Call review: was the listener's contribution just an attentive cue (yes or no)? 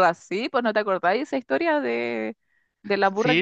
no